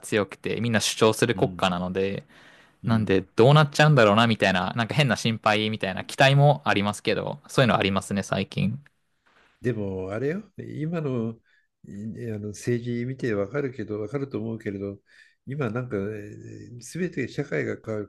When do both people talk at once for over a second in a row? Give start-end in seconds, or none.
none